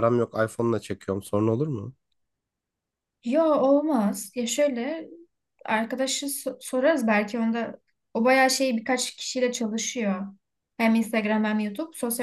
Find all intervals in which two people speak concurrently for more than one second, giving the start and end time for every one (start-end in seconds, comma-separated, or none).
none